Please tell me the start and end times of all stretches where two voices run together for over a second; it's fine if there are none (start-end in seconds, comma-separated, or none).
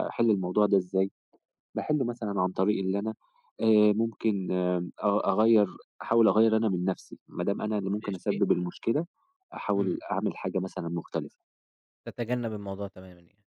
none